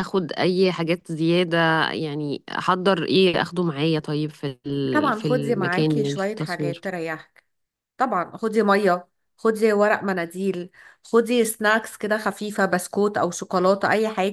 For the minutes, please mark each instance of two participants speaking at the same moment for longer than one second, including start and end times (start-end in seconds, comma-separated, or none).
4.9-6.8